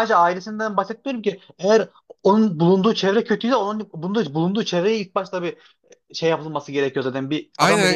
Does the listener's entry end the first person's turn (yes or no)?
yes